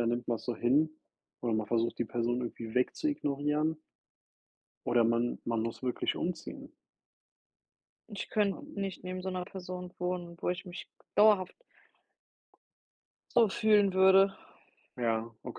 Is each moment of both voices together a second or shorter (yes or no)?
yes